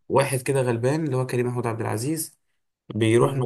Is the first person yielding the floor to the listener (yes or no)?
no